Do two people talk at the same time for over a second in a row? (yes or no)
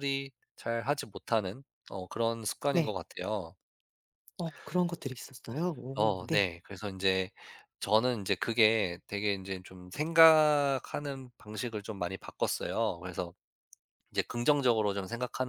no